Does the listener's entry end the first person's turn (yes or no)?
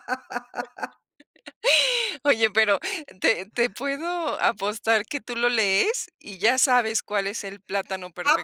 yes